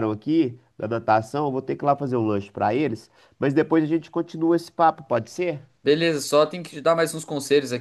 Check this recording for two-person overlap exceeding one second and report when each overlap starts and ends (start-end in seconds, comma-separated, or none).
none